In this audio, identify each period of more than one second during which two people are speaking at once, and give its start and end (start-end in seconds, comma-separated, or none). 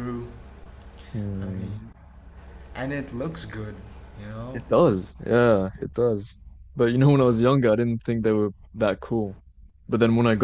none